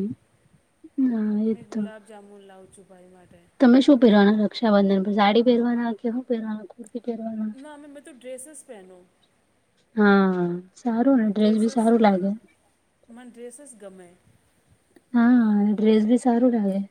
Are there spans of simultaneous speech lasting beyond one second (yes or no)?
no